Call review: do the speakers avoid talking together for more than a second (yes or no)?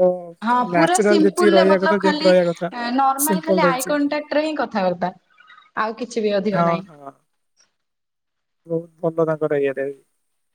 no